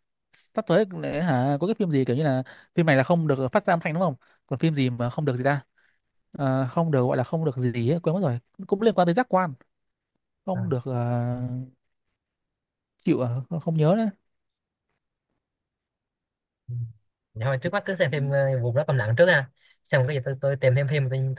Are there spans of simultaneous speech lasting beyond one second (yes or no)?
no